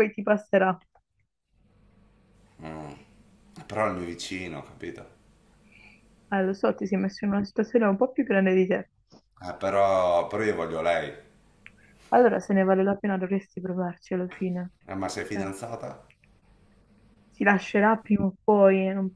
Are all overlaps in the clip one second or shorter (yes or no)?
yes